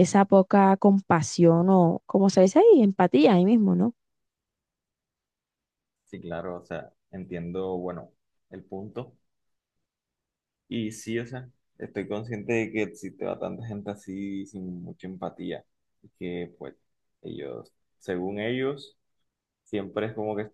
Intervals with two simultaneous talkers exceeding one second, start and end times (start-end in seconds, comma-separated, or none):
none